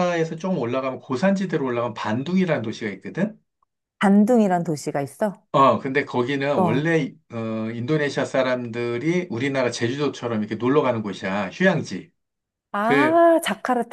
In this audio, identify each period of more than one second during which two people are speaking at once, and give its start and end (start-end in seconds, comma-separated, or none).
none